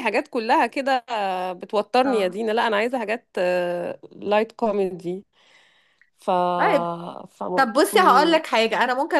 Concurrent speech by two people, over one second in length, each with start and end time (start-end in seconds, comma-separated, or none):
none